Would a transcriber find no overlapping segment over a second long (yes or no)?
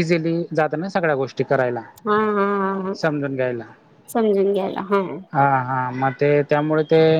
yes